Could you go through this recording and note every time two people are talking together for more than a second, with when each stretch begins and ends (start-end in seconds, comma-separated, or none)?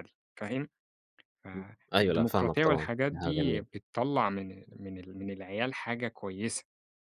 1.5-3.6